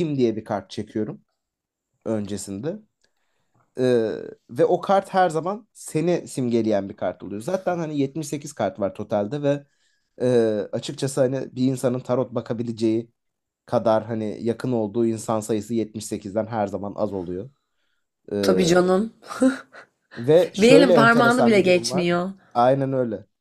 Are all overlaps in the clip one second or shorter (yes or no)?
no